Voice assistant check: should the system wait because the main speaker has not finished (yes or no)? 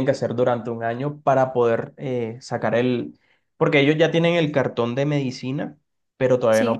yes